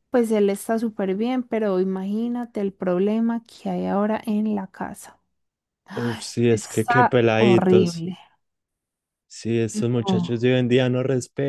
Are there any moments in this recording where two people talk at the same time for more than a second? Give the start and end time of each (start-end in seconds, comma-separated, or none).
6.5-8.1